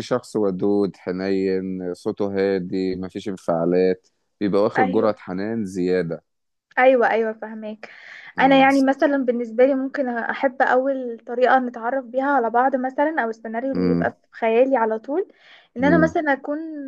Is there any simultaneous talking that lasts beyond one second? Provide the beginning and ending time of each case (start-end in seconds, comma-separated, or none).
none